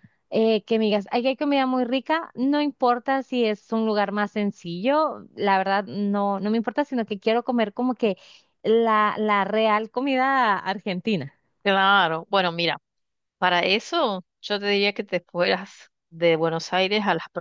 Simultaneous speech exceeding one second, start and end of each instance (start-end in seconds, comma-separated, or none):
none